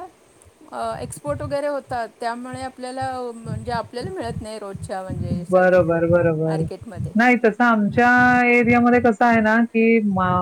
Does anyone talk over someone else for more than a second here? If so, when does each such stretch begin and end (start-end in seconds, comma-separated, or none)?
none